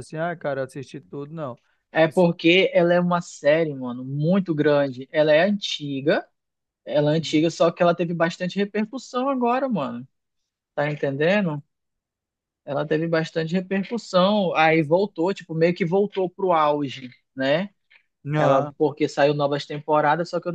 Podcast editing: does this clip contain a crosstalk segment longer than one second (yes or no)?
no